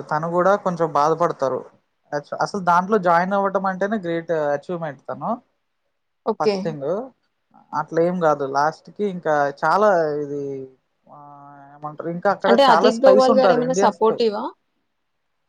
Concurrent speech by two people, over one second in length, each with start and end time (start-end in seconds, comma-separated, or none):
12.5-14.3